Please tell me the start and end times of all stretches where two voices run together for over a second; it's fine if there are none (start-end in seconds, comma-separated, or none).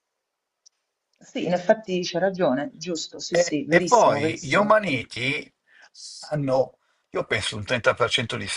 3.3-4.8